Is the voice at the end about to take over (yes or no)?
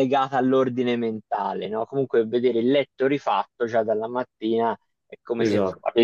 no